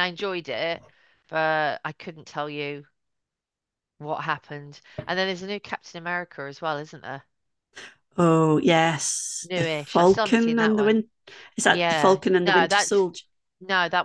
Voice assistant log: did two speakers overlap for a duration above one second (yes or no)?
yes